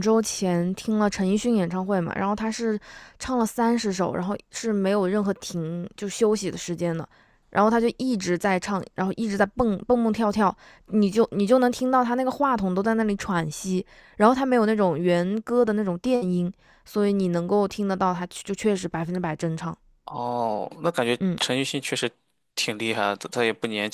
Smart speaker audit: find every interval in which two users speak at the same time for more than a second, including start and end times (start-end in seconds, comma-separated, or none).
none